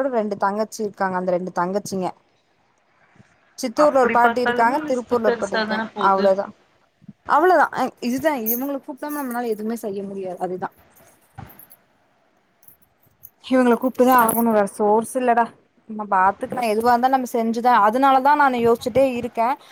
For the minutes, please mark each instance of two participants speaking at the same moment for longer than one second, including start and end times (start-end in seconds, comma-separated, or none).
3.9-6.2